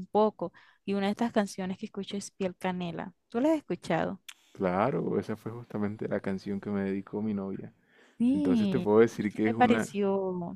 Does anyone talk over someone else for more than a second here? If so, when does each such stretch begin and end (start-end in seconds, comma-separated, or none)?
8.3-10.0